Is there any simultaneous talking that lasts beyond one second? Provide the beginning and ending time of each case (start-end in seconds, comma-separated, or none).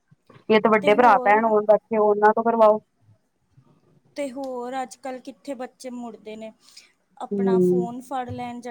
none